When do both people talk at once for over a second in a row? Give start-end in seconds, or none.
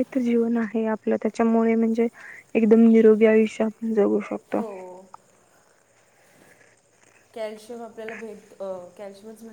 none